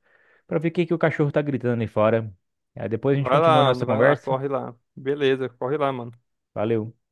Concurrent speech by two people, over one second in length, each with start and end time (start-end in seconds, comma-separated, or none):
3.1-4.4